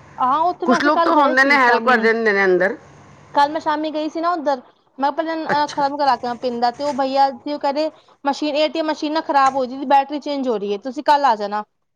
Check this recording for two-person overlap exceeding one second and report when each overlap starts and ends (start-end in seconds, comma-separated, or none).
0.7-2.1